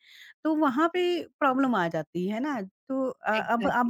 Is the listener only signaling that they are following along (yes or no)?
yes